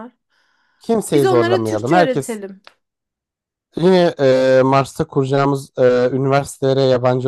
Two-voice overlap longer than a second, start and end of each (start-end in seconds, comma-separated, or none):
1.1-2.4